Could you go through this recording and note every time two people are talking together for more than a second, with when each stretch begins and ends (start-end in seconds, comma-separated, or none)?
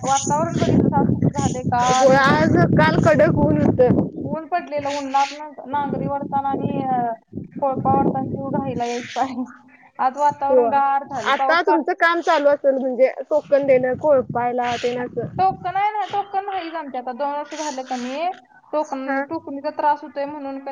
10.3-11.8